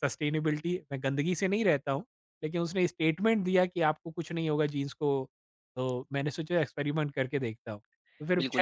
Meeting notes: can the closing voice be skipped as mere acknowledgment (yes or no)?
no